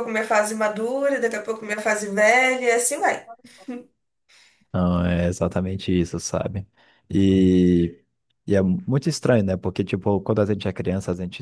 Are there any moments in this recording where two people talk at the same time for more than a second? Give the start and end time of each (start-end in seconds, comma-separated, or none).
none